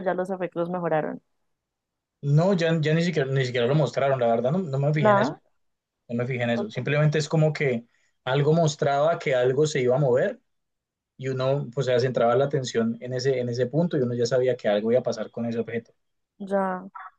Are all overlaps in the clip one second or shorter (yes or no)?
yes